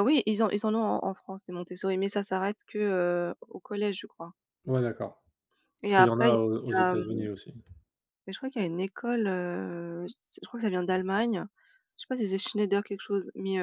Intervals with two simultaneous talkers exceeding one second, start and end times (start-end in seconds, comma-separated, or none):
5.8-7.3